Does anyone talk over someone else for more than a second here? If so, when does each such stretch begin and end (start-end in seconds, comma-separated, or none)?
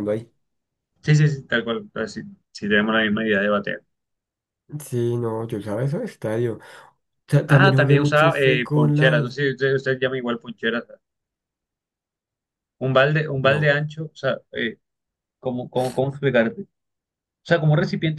7.5-9.3